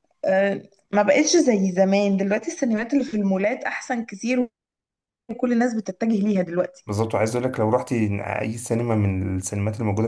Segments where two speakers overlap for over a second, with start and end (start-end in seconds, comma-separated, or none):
none